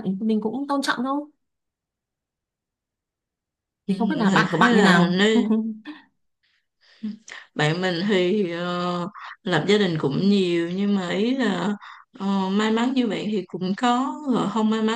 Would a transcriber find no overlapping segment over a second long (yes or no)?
no